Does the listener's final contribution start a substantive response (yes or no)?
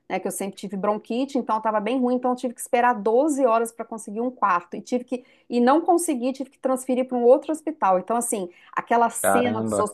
no